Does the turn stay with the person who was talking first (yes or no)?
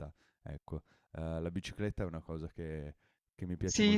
yes